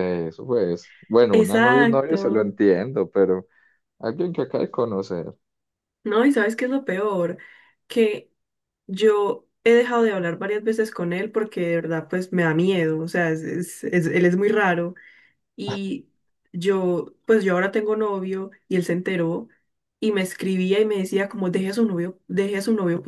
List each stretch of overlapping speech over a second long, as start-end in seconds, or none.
1.3-2.5